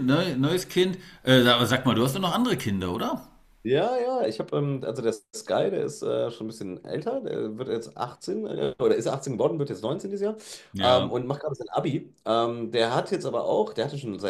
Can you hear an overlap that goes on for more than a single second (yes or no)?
no